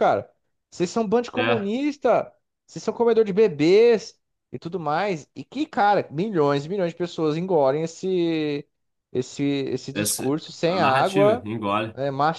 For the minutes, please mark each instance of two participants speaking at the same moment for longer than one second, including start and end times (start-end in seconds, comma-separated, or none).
9.9-11.4